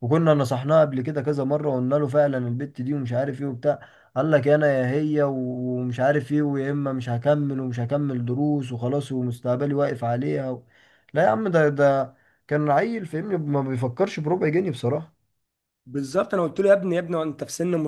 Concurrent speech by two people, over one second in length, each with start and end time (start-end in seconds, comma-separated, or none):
none